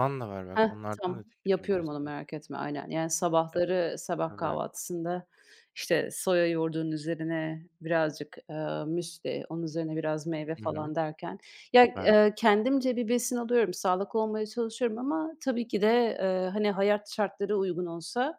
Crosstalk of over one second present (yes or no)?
yes